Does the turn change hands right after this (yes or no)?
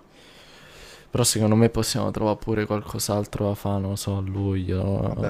yes